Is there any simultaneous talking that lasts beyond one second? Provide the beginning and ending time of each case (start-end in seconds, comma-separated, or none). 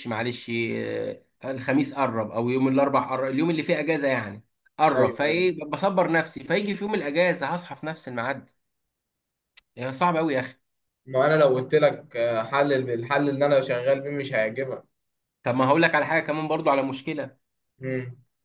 none